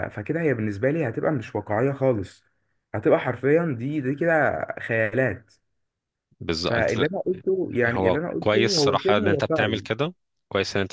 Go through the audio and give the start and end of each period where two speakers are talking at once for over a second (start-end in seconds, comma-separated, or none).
7.8-9.8